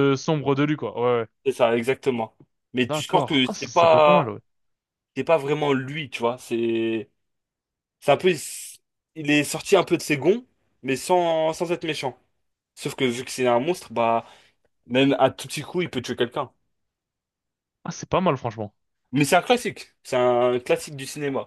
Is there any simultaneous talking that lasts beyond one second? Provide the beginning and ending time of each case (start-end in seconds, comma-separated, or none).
2.9-4.3